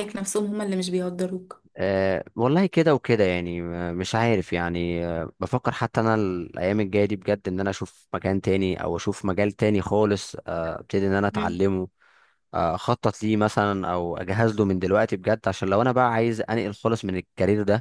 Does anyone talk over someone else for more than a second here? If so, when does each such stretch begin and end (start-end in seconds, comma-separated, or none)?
none